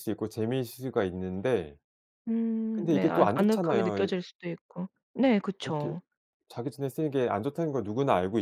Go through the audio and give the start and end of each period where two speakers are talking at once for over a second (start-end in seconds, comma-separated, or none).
2.7-4.1